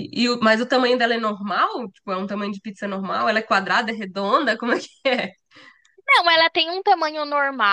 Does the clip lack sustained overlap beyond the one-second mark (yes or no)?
yes